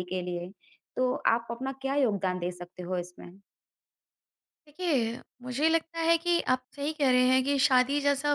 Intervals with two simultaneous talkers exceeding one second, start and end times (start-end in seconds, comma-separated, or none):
none